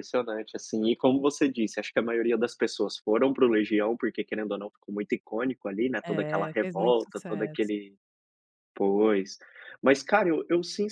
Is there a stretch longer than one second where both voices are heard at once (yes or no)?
yes